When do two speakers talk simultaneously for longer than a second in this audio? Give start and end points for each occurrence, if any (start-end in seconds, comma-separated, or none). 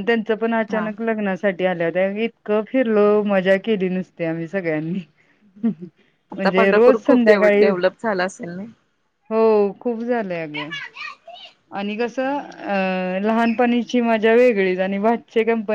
6.3-7.7